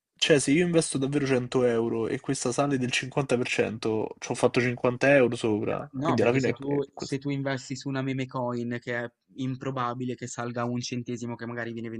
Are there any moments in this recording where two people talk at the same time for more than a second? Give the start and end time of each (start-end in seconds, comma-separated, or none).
5.7-7.2